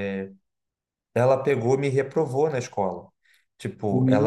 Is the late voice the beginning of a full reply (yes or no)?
yes